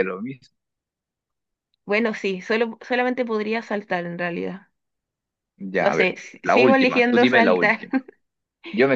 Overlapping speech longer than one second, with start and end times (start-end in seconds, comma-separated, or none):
5.8-7.8